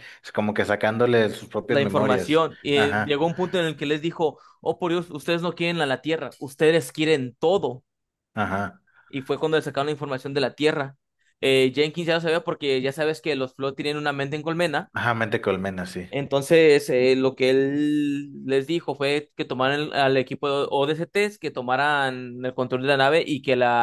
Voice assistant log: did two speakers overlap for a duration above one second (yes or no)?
yes